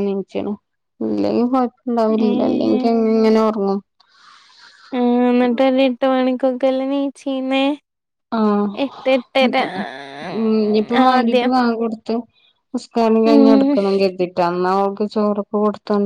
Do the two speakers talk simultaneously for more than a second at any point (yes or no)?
no